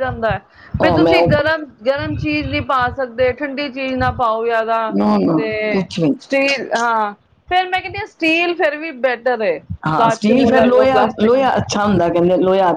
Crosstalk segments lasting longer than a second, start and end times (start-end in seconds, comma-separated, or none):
10.0-11.5